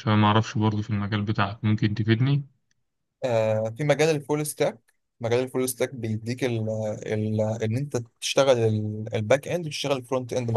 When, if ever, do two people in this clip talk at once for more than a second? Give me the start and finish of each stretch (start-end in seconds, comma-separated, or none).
none